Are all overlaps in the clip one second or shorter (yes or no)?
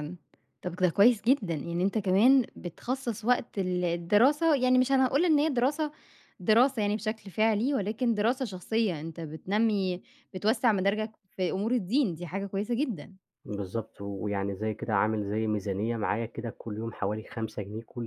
yes